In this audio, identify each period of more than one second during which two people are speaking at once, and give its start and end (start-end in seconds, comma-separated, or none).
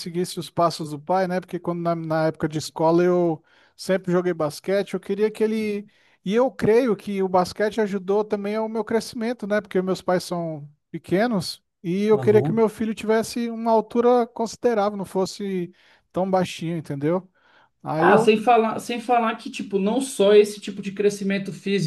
none